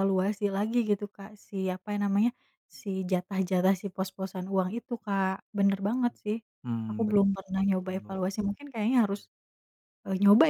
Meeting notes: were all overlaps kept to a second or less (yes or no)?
no